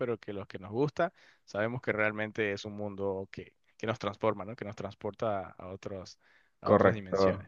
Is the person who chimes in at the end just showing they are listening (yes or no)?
no